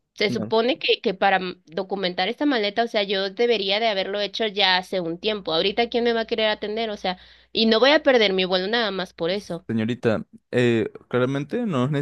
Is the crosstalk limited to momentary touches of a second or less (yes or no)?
yes